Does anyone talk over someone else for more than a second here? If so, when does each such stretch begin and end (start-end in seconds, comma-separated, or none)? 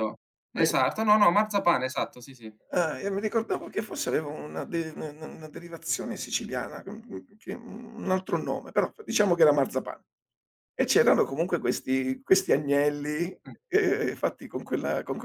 none